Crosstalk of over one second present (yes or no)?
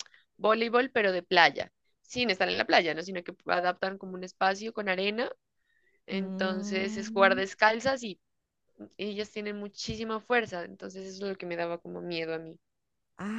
yes